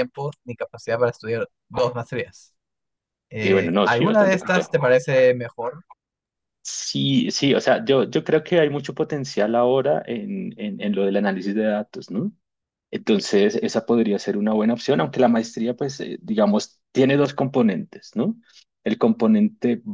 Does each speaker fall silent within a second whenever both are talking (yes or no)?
no